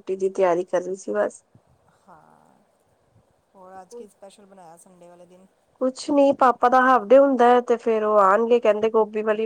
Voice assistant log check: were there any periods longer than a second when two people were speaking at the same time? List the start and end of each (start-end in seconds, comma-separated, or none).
none